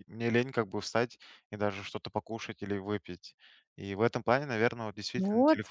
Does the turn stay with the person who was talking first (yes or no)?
yes